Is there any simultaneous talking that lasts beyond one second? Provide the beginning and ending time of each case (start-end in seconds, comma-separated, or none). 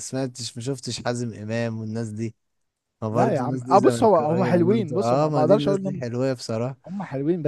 3.1-6.0